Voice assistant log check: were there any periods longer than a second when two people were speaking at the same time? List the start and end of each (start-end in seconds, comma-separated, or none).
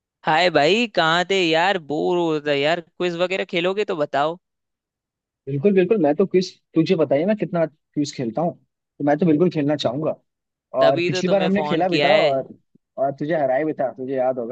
10.8-12.3